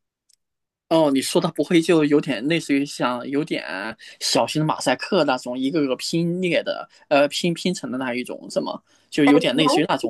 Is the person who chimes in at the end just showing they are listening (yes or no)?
no